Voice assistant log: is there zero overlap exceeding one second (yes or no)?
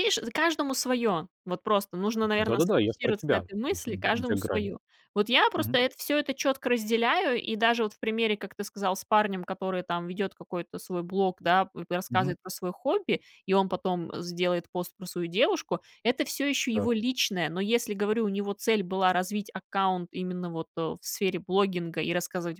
no